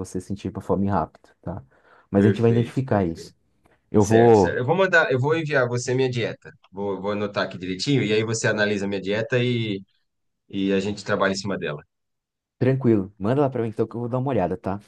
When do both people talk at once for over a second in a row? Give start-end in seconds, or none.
2.1-3.3